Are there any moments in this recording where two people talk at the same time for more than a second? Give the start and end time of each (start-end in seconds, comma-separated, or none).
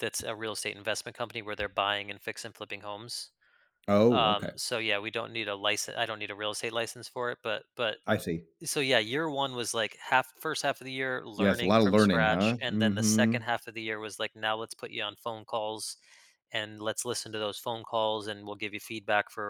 11.4-13.5